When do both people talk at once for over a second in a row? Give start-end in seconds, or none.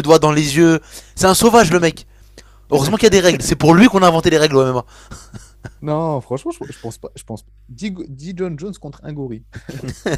none